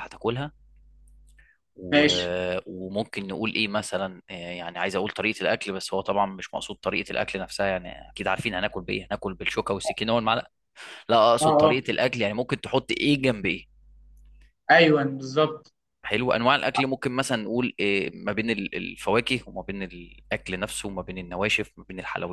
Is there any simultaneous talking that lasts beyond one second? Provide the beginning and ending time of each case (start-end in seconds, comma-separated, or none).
none